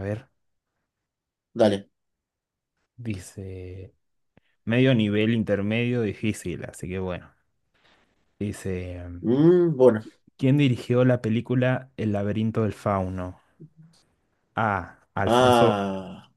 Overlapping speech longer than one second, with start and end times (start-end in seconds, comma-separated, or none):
none